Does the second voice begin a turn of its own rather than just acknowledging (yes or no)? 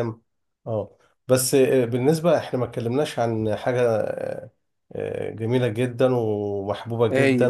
no